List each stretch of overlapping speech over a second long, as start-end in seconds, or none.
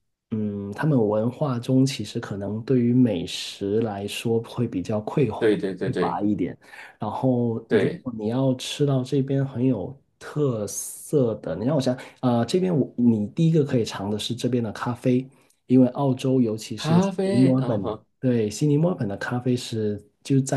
16.8-18.0